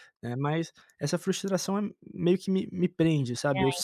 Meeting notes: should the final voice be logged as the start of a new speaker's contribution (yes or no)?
no